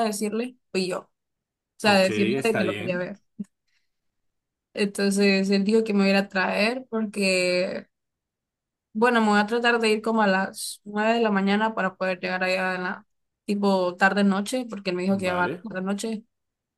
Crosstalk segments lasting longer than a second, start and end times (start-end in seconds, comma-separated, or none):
1.8-3.1